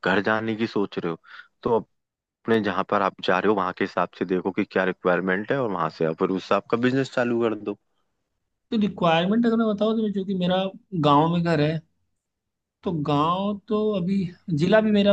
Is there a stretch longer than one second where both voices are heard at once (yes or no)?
no